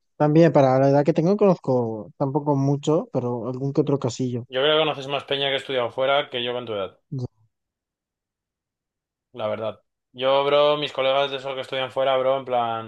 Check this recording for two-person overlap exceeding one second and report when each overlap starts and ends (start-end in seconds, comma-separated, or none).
none